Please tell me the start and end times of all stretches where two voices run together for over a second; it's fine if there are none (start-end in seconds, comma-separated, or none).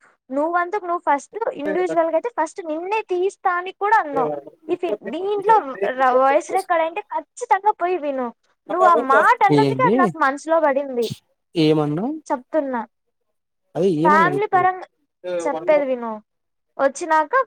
none